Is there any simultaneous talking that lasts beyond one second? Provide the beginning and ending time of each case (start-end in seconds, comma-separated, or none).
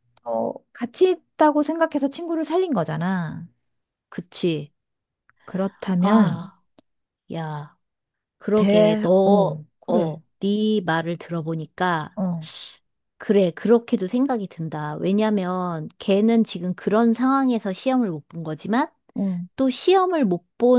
8.6-10.2